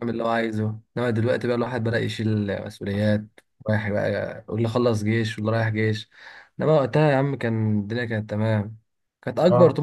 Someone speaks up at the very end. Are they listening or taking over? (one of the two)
listening